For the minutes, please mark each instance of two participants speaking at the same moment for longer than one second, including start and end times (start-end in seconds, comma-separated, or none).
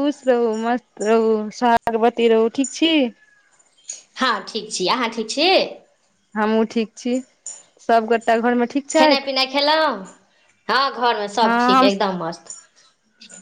none